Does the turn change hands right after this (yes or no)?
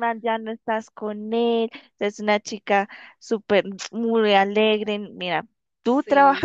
no